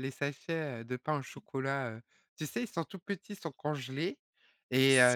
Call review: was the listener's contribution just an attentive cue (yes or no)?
yes